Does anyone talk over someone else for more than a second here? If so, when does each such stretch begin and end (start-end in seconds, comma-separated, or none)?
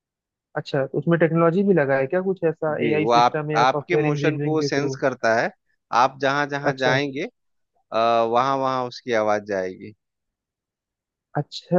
2.7-5.0